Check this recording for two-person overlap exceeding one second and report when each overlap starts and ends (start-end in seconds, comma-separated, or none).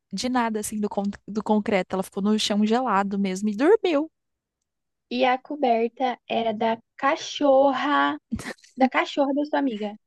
none